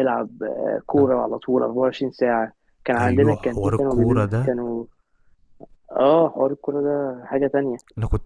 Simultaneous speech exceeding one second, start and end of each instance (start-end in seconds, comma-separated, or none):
3.0-4.5